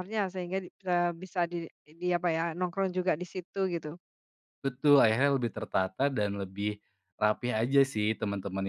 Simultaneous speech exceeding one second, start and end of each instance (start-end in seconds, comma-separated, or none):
none